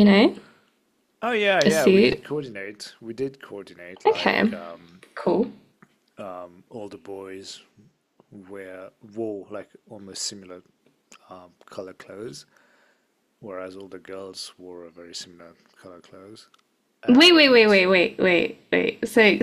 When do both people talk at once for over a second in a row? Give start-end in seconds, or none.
none